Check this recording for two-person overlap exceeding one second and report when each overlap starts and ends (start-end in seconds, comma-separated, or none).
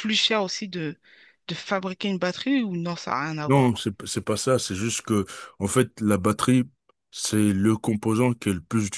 none